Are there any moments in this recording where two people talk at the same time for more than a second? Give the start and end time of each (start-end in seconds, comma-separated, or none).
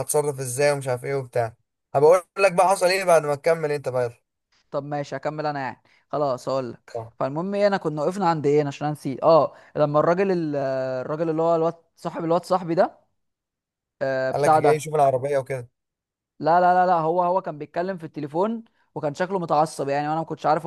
none